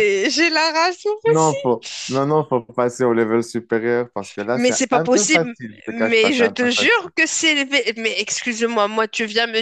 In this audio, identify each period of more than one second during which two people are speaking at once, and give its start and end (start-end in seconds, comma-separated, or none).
4.5-7.1